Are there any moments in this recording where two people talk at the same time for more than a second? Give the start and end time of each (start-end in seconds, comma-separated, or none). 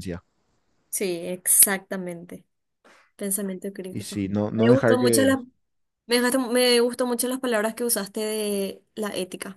3.9-5.3